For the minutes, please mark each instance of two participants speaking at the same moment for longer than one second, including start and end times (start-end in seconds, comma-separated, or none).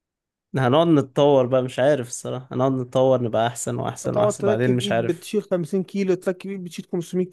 4.0-5.3